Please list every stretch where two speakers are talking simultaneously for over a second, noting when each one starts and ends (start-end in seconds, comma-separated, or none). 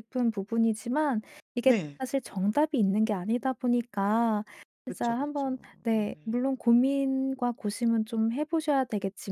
4.9-6.4